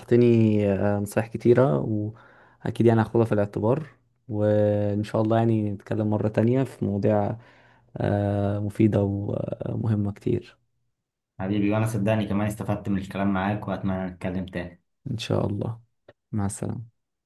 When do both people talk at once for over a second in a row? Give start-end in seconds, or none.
none